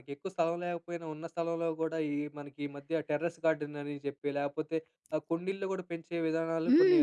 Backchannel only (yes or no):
no